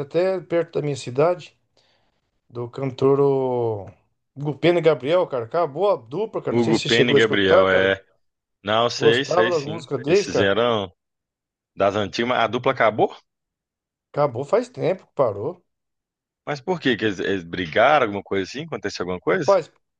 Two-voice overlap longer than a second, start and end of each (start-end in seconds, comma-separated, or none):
6.5-7.9, 8.9-10.6